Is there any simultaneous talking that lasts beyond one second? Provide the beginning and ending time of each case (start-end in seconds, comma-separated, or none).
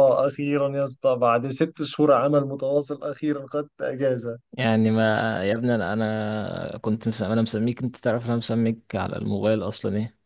none